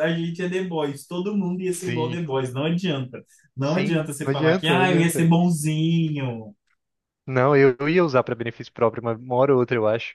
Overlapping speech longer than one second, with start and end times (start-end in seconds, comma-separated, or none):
3.6-5.3